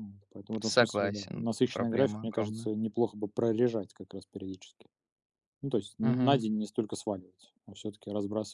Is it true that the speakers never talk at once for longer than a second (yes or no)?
no